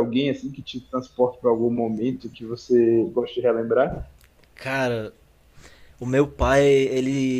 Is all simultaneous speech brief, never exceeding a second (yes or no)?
yes